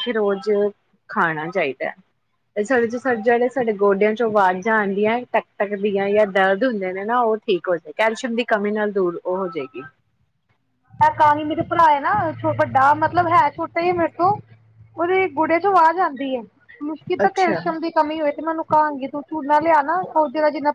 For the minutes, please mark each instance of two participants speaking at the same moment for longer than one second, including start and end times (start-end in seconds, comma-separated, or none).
none